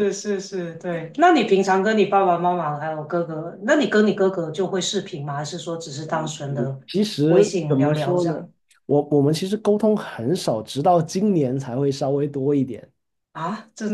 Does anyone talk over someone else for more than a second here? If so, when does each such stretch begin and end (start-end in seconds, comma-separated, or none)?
7.3-8.5